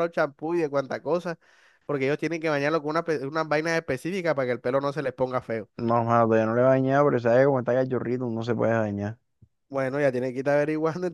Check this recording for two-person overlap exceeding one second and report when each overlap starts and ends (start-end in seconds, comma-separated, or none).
none